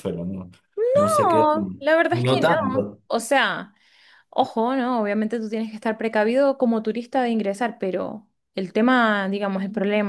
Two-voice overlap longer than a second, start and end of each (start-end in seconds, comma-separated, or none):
1.3-3.0